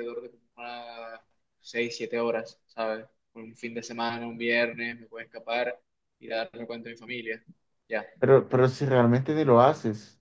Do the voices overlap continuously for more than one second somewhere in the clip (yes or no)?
no